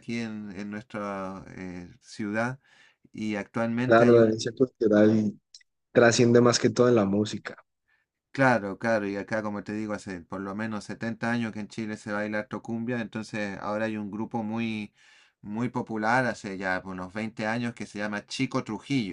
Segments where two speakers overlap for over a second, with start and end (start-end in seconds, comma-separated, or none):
none